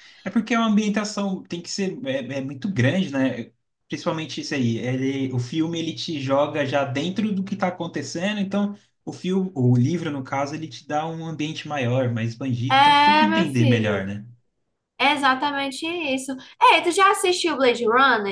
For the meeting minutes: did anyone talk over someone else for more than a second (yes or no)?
yes